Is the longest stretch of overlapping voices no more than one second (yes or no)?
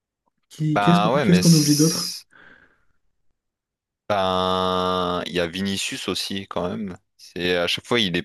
no